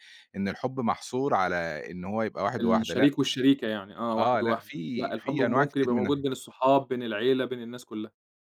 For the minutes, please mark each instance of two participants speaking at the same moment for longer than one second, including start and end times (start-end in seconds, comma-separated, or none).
4.2-6.2